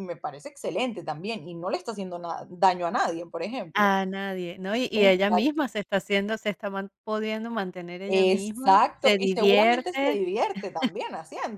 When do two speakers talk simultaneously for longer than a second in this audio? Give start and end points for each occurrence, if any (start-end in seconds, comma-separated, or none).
8.1-10.2